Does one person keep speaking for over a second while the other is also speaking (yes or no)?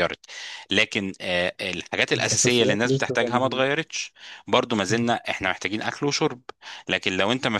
yes